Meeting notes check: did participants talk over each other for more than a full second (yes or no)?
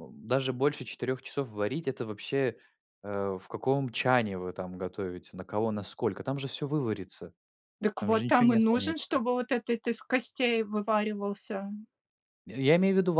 yes